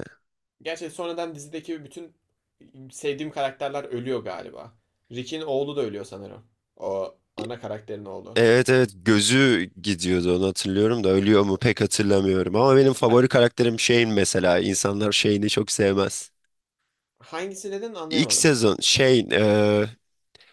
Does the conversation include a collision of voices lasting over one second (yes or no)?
no